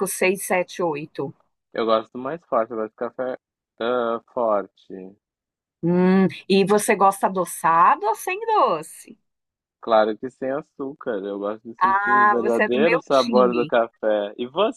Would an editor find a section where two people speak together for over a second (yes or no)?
yes